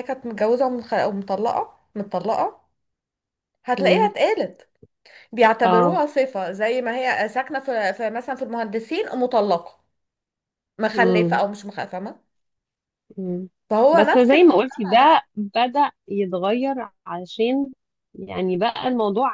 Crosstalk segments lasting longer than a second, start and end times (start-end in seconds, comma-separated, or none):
13.9-15.2